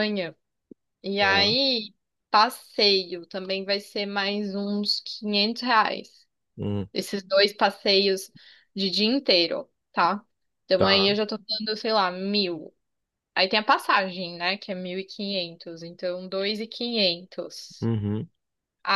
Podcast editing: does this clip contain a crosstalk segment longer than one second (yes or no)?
no